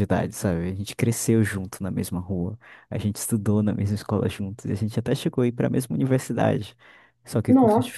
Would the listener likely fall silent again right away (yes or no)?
yes